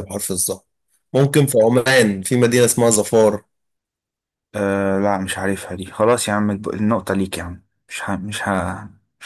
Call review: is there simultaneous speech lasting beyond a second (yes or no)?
no